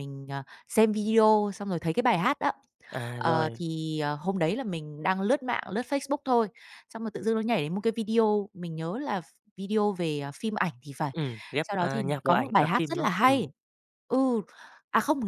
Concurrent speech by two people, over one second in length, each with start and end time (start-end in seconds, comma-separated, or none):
11.6-13.5